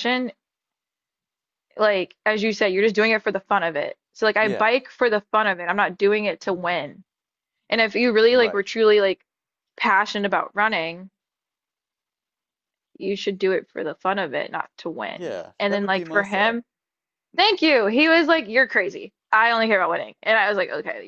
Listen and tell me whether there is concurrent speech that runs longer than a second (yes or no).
yes